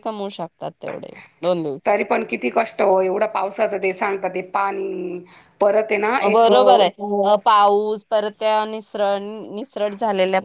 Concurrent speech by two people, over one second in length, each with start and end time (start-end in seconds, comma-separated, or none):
none